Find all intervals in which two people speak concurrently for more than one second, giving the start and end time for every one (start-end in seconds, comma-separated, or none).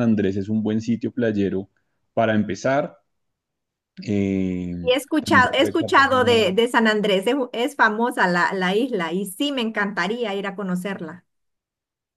4.8-6.6